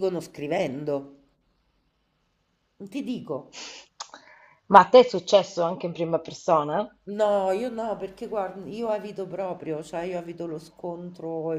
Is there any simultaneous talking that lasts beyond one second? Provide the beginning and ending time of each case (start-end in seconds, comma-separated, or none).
none